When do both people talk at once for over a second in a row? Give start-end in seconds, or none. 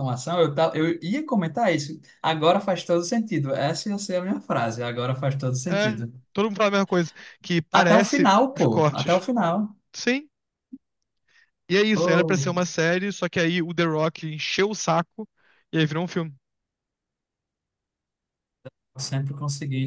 7.7-9.2